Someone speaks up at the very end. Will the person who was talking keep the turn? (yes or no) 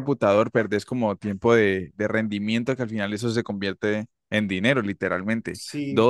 yes